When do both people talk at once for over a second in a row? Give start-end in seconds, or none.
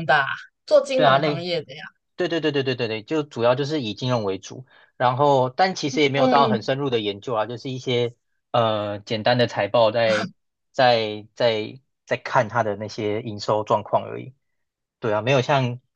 none